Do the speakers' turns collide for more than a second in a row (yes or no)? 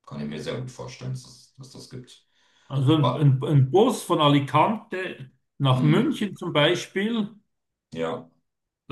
no